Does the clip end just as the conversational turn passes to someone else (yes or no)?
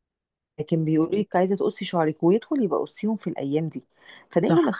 no